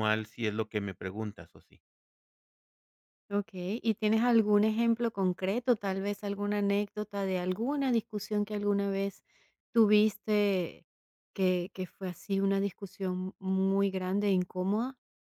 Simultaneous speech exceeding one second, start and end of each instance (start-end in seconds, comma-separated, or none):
none